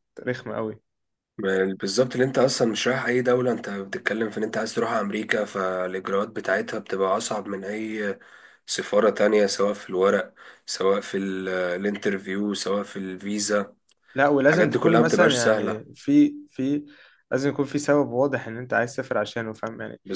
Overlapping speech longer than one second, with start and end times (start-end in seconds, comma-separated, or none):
14.4-15.8